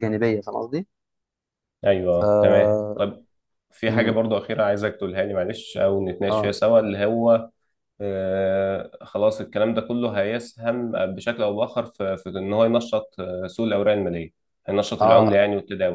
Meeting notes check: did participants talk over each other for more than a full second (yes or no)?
no